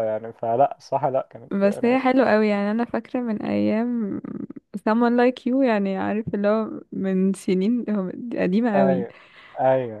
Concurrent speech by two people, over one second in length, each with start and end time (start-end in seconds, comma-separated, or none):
none